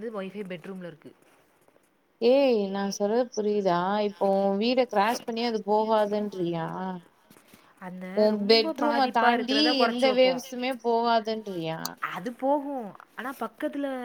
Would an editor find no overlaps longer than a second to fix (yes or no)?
no